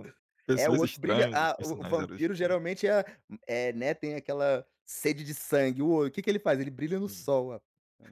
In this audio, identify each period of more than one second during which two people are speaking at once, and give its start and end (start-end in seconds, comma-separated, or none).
0.5-2.6